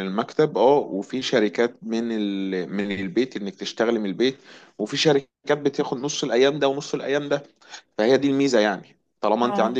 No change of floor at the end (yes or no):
yes